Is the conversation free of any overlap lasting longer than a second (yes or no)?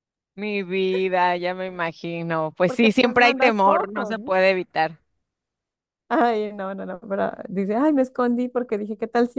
no